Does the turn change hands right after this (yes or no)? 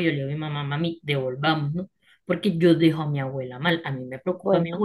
no